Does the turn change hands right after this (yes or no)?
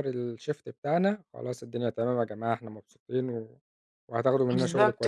yes